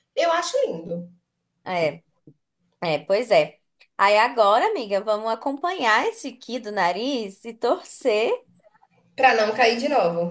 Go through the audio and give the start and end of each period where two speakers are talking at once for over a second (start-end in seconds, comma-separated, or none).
none